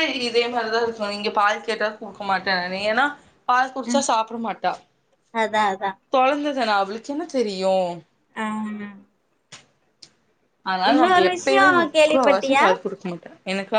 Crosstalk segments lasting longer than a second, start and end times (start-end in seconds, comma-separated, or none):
10.9-12.7